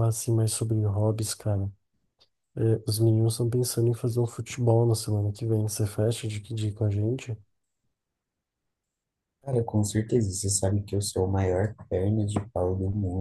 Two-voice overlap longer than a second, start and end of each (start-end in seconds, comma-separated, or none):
none